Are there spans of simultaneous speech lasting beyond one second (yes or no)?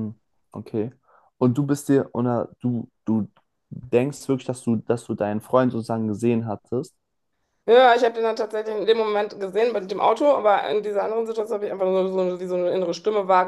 no